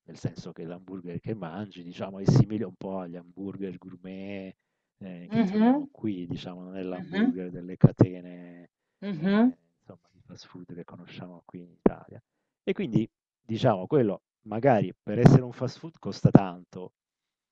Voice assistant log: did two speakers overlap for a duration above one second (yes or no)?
no